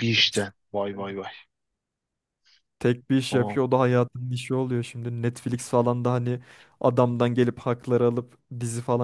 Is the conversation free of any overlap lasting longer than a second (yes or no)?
yes